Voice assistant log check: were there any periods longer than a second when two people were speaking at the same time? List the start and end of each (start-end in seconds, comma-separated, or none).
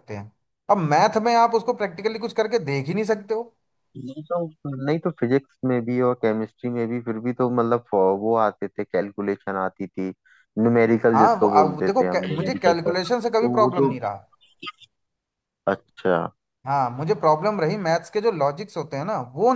11.2-13.9